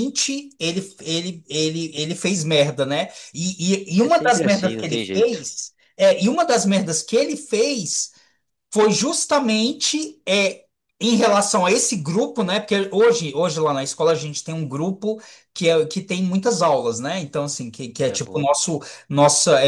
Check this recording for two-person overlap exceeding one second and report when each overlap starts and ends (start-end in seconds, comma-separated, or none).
4.0-5.4